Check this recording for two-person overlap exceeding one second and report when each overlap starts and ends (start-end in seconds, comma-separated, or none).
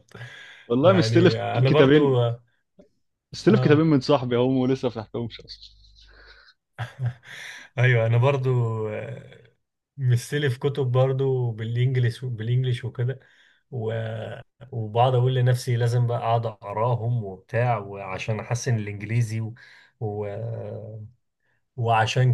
0.8-2.2